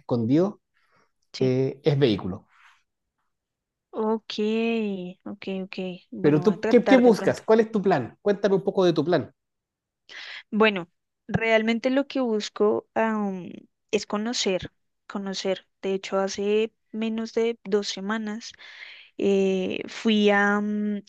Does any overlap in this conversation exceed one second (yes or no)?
yes